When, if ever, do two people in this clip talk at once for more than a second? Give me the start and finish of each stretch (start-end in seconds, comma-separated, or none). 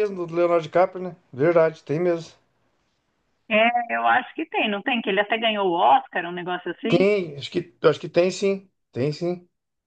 none